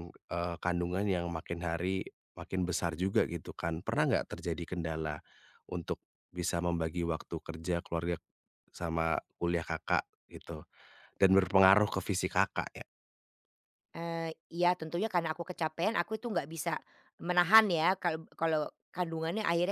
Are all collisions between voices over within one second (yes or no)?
yes